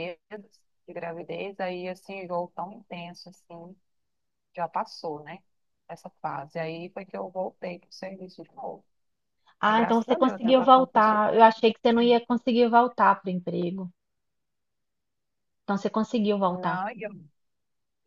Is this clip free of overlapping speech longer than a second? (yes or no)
no